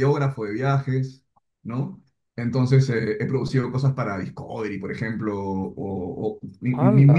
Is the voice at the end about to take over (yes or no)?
no